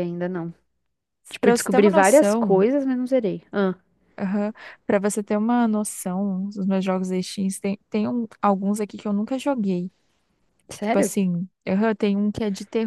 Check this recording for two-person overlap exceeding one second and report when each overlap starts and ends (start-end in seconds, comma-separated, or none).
1.4-2.6